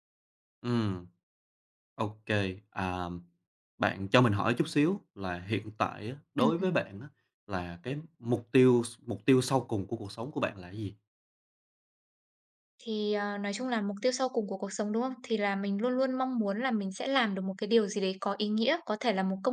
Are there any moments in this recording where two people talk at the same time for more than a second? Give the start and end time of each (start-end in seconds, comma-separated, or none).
none